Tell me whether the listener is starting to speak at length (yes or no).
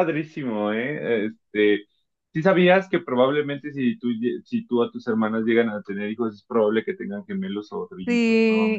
yes